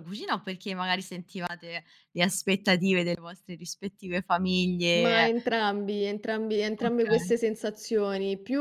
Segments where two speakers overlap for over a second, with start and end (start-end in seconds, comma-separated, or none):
none